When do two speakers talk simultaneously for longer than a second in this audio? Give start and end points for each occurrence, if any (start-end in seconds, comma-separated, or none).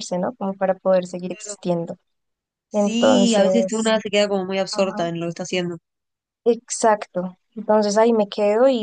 2.7-4.0